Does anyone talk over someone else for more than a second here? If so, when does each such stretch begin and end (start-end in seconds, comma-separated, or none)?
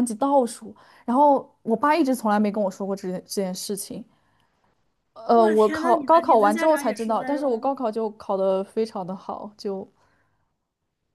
5.3-7.8